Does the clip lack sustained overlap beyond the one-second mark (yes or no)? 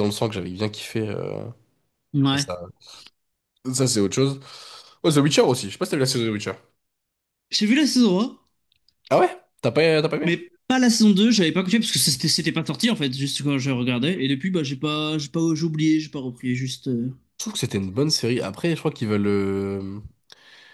yes